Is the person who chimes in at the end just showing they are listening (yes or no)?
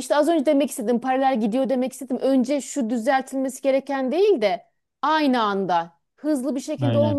yes